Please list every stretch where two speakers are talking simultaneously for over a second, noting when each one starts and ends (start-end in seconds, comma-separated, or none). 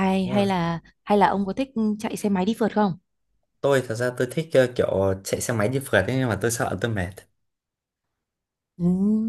none